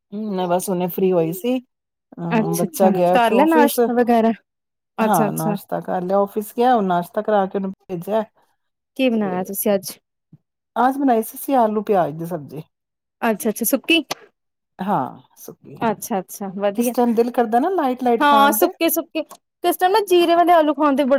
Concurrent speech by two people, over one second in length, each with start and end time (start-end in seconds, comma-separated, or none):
2.4-3.8